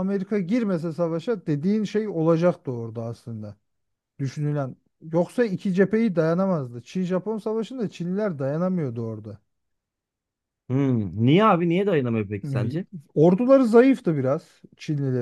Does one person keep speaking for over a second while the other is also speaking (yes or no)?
no